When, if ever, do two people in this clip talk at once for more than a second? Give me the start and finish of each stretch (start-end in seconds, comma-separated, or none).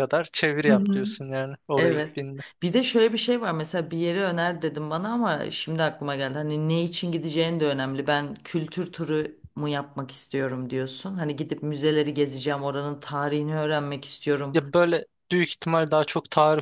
none